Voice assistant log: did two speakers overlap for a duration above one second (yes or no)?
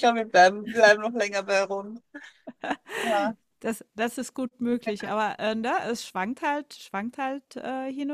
no